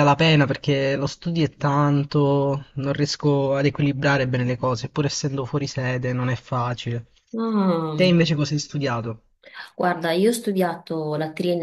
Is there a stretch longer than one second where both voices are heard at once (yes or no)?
no